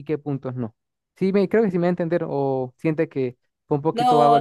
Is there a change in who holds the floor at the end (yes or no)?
yes